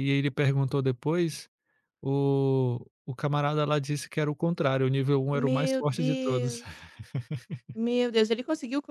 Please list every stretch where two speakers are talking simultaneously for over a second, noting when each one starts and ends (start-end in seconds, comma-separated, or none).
5.3-6.6